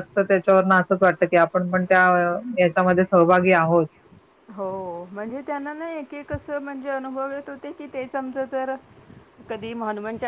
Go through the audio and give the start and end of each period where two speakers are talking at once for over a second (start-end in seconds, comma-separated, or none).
none